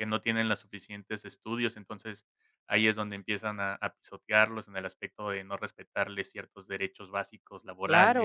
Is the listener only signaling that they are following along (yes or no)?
no